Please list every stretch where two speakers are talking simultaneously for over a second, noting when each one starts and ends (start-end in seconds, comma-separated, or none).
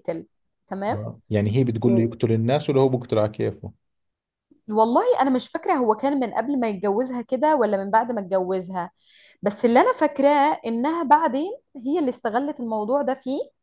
none